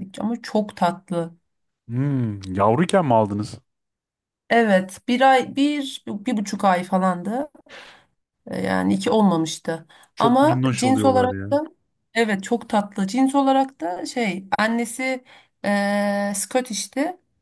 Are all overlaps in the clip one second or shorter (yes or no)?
no